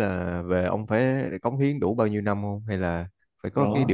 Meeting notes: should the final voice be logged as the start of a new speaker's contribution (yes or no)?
yes